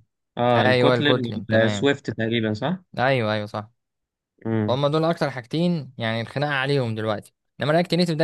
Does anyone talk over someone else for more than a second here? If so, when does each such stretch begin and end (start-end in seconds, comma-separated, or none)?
0.6-1.9